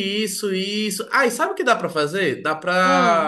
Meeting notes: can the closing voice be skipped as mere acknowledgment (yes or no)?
yes